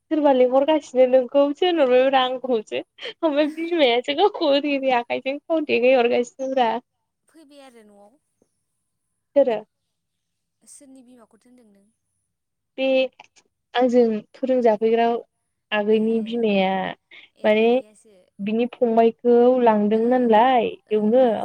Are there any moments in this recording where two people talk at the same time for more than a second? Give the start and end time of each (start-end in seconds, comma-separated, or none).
none